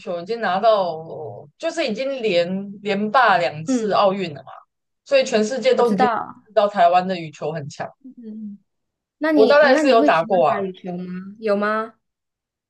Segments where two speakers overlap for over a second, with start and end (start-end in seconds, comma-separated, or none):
9.3-10.6